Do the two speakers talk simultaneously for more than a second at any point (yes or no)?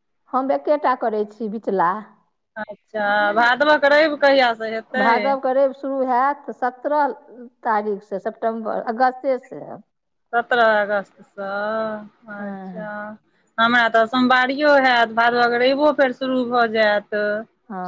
no